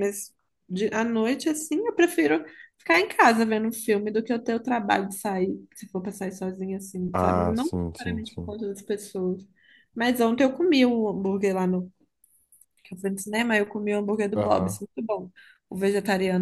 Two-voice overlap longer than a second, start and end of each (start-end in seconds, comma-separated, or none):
7.1-8.6